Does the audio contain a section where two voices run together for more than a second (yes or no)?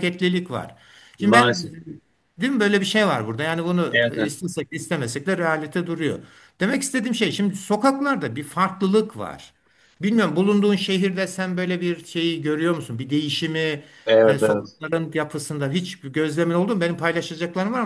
no